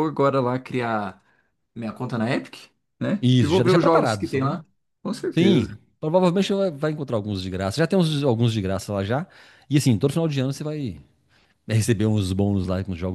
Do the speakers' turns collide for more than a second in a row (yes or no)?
yes